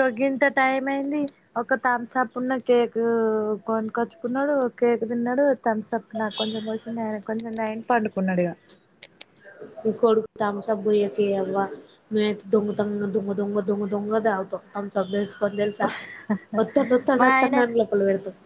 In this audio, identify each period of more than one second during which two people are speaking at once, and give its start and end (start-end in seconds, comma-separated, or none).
none